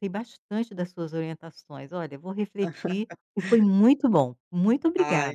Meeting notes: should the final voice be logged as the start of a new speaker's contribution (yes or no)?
yes